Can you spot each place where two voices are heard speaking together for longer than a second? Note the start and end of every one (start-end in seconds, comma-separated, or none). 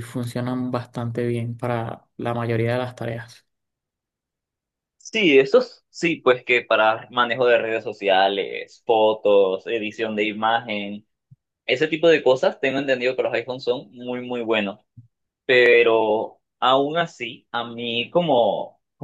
none